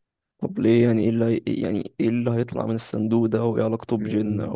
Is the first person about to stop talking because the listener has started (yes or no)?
yes